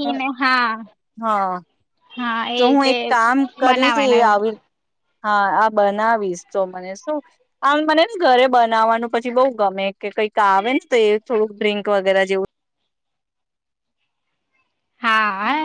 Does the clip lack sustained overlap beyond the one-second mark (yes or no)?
yes